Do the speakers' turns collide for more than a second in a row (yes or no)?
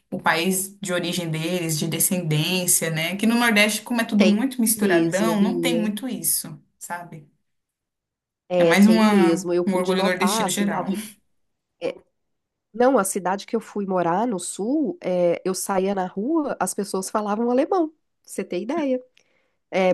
yes